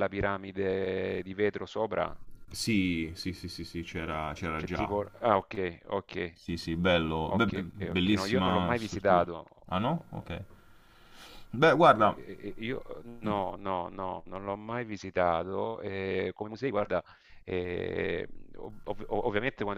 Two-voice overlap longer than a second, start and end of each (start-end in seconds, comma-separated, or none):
7.3-9.3